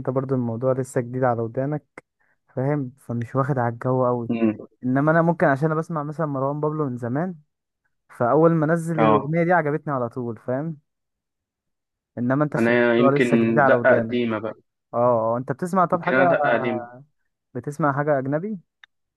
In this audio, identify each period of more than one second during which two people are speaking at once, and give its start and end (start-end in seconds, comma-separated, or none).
12.6-14.2